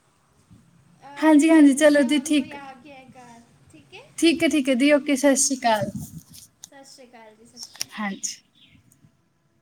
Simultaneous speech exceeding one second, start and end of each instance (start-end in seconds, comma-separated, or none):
1.2-2.5